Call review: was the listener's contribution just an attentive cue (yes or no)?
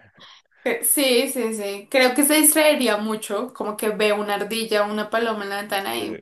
yes